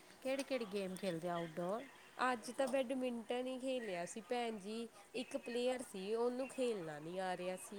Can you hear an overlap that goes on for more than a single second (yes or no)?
no